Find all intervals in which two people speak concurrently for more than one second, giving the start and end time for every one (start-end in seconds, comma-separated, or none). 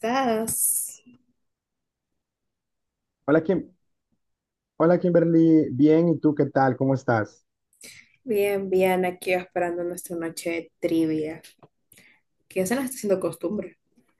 none